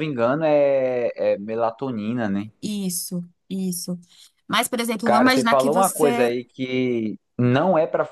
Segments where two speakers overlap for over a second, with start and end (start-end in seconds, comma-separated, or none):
5.0-6.4